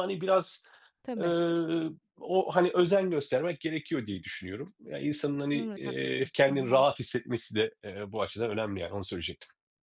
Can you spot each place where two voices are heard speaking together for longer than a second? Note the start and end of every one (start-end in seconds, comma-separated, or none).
5.5-6.8